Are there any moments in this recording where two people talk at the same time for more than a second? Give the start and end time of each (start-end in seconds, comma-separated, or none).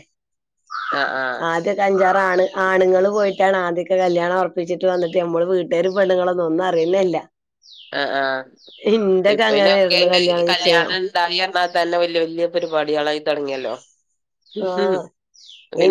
9.5-10.9